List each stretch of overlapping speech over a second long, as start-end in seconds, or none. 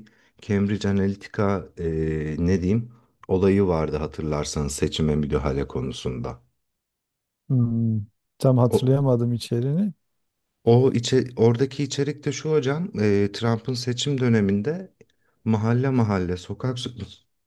none